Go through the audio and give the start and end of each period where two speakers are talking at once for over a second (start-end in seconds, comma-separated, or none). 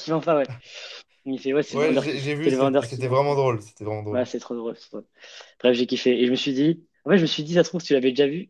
1.7-3.2